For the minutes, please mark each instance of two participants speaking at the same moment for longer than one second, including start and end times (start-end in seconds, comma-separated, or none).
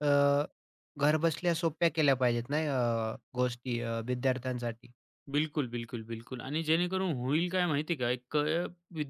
none